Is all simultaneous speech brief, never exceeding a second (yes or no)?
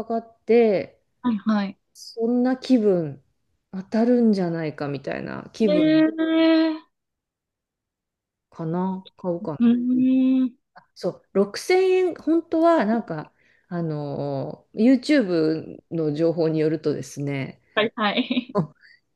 yes